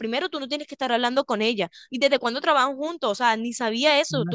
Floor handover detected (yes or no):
yes